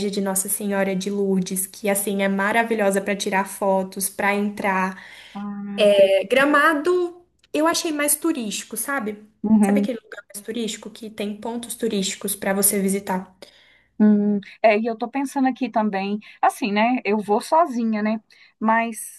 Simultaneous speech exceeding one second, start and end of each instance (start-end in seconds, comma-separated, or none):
none